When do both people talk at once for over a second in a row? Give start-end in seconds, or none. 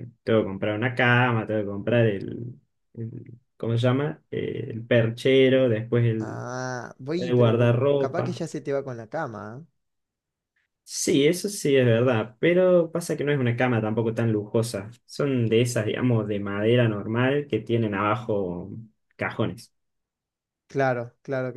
7.2-8.4